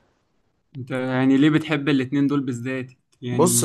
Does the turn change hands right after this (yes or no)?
yes